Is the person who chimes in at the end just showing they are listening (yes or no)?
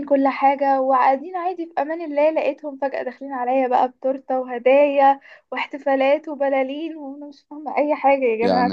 no